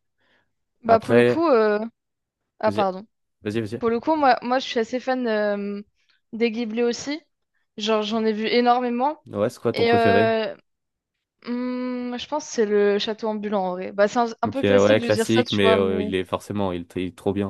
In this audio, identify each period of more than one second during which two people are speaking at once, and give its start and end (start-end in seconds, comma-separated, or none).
14.4-16.1